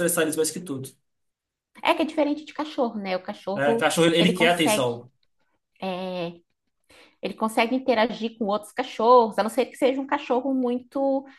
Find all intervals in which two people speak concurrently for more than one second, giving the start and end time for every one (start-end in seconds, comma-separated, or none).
3.5-5.0